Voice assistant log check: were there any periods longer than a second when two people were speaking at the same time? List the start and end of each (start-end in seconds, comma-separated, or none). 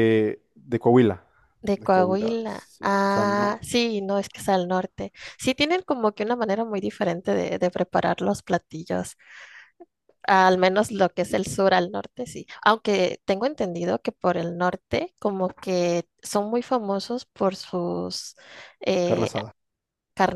1.8-3.6